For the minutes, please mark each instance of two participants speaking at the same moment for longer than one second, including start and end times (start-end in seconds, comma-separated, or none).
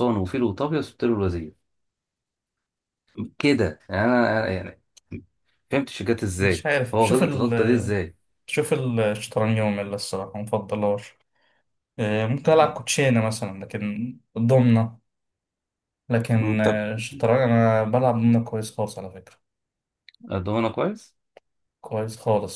6.4-8.0